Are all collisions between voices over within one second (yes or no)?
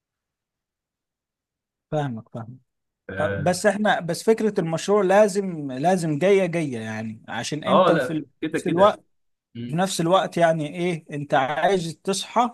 no